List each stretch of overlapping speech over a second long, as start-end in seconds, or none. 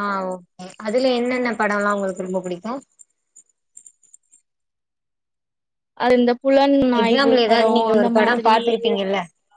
7.0-9.0